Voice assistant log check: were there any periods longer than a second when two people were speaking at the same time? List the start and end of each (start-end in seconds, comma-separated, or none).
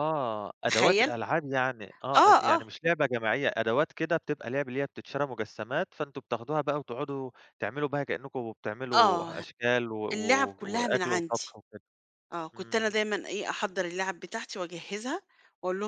10.1-11.5